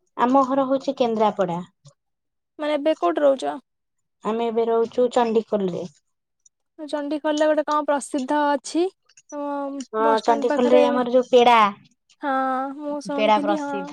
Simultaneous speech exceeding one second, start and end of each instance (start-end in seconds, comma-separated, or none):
none